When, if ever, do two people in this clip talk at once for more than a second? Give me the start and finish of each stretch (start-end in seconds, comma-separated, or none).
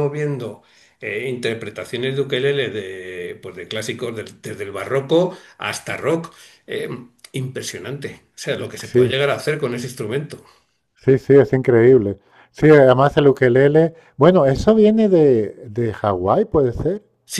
none